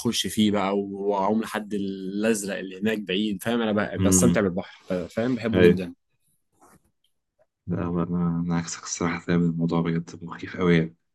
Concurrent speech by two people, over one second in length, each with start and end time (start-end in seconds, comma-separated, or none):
none